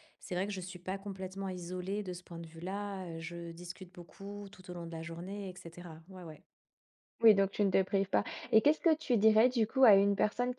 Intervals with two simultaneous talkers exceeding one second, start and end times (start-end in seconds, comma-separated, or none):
none